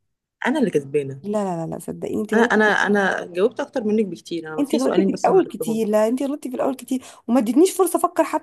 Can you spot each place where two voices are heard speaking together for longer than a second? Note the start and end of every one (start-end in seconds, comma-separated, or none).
4.6-5.8